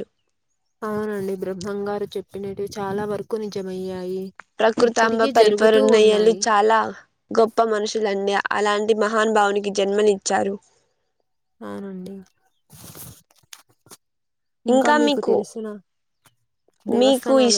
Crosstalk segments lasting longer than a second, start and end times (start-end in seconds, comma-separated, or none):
4.9-6.4